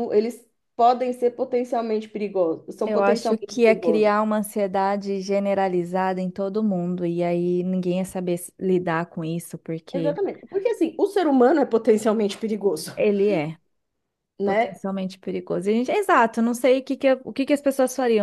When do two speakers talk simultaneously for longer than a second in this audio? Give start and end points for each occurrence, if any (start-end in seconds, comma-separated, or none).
2.8-4.1